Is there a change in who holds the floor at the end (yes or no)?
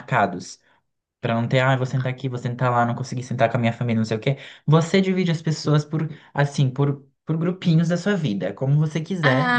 yes